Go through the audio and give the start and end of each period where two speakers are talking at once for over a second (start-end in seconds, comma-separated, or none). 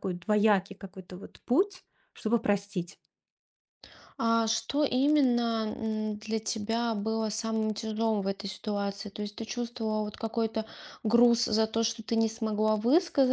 none